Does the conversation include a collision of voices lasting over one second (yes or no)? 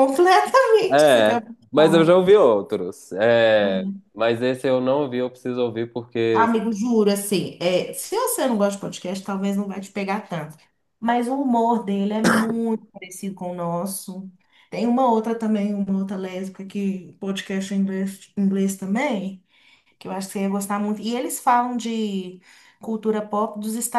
yes